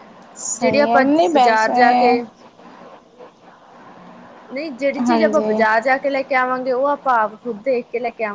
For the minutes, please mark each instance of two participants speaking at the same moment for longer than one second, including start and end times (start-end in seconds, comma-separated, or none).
0.6-1.8